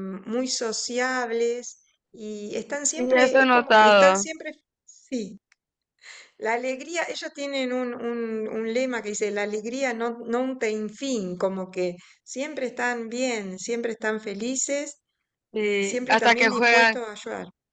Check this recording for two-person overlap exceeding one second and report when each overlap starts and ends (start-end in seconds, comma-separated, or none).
3.0-4.3, 15.6-16.9